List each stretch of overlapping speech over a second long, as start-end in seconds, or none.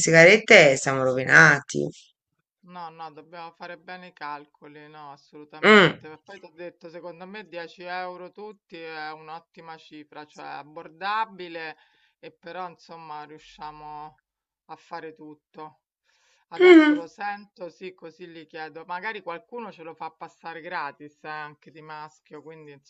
none